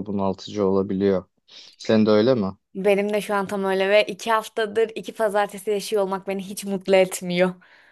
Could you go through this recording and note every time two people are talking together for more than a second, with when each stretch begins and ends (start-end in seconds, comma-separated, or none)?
none